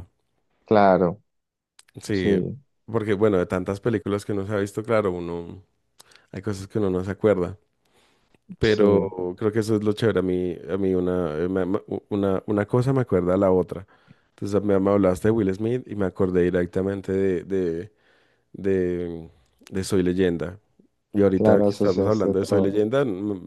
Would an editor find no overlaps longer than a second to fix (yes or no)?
no